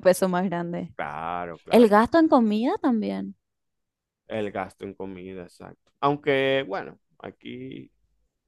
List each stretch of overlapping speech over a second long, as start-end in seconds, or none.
none